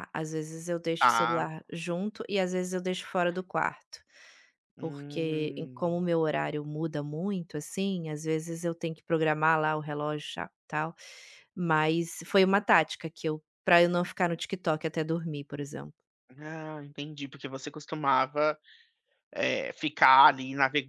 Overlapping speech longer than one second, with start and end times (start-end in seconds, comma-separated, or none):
4.8-6.1